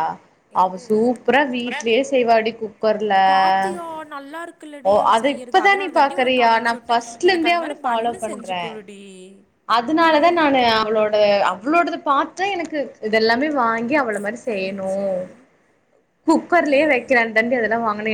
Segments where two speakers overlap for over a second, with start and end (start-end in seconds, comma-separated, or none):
4.9-8.7